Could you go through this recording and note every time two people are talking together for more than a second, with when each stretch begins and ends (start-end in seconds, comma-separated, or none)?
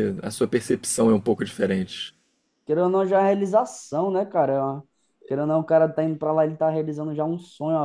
none